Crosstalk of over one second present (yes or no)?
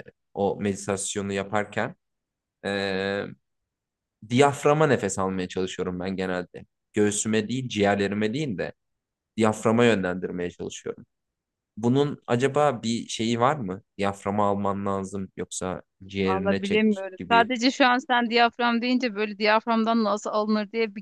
yes